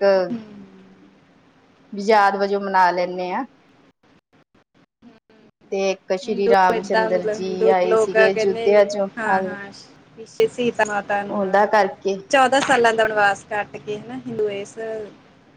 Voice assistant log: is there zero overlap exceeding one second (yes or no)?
no